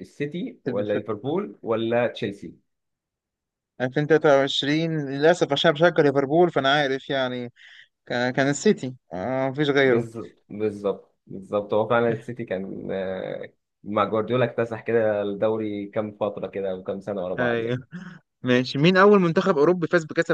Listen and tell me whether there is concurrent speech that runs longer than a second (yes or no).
no